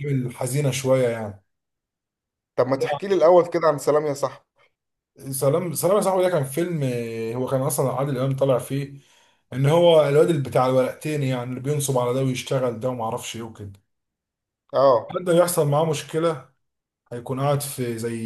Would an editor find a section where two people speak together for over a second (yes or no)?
no